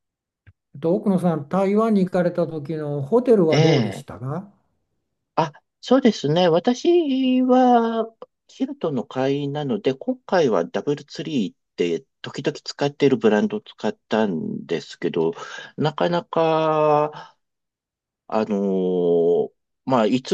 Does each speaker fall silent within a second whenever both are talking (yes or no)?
yes